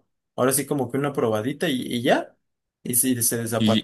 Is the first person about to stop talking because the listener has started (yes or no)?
yes